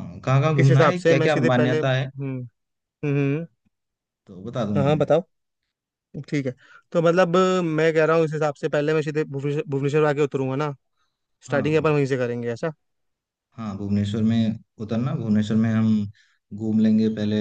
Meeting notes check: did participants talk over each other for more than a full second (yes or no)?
yes